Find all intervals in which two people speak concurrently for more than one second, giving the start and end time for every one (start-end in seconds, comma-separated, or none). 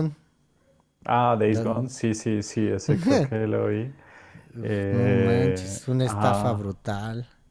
4.9-6.7